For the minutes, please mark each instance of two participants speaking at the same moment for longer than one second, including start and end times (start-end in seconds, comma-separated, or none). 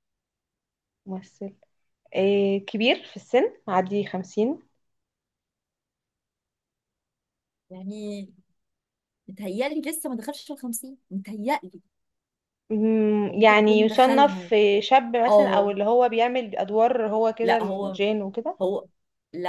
13.3-14.5